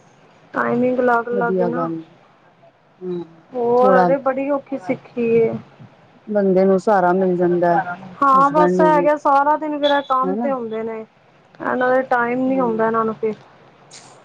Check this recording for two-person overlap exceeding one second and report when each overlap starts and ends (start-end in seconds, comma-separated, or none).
none